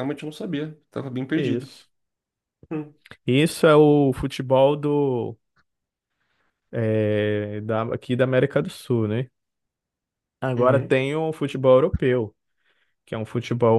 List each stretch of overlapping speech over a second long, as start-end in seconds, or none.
none